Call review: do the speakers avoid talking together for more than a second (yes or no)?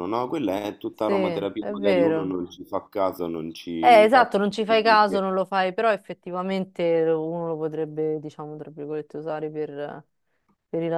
no